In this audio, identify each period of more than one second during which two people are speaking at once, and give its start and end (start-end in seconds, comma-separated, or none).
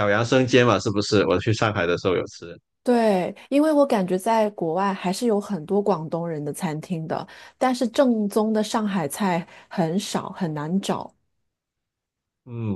none